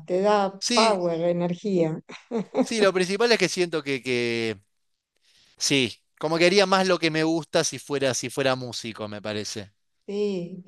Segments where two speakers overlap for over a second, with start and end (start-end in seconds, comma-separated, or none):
none